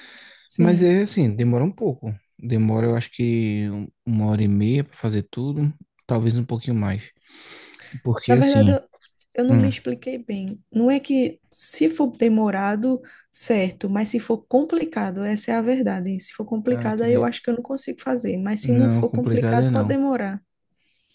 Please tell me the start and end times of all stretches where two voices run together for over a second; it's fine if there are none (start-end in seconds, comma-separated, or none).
18.6-19.9